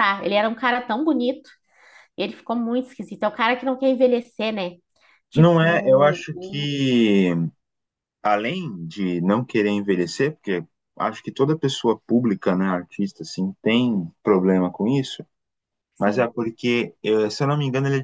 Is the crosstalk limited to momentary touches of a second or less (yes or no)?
no